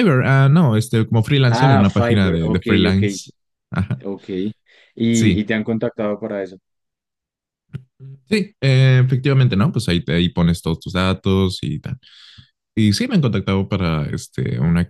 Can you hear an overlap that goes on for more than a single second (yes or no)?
yes